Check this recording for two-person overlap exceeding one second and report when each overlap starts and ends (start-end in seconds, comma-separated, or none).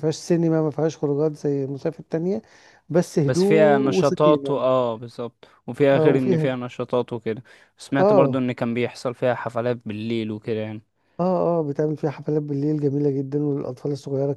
3.2-4.7